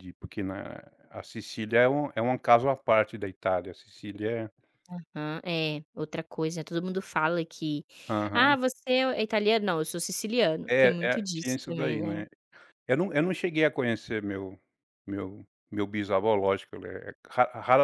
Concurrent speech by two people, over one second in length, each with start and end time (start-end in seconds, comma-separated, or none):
10.7-12.2